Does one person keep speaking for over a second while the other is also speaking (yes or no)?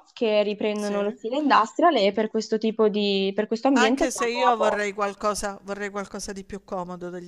yes